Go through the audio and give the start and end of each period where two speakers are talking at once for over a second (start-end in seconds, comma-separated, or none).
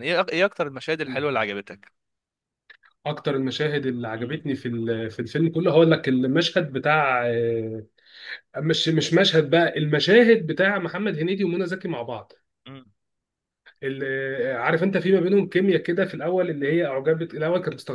none